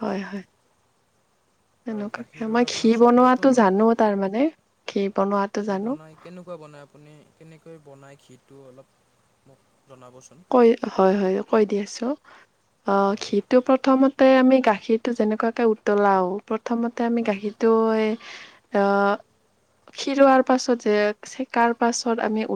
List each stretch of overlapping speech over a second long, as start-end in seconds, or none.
1.9-3.6